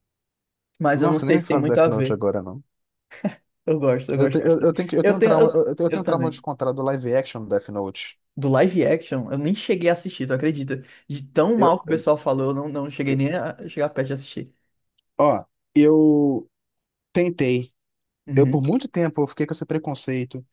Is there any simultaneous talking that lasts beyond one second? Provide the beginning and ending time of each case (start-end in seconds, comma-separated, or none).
1.0-2.2, 4.1-6.4